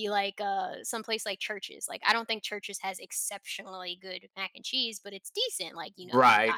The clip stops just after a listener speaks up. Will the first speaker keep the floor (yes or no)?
no